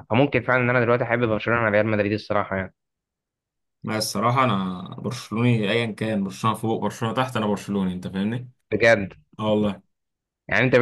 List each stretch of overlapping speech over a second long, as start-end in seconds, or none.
none